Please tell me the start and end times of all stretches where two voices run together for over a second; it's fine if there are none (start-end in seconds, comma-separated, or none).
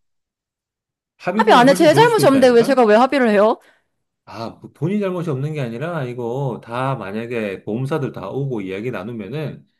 1.4-2.8